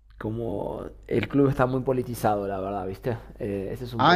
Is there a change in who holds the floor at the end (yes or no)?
yes